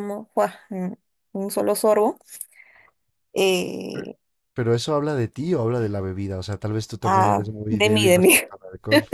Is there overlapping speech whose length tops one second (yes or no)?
yes